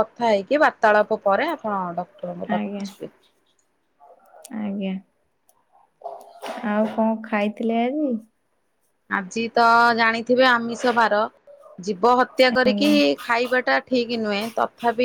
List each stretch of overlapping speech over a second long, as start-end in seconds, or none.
none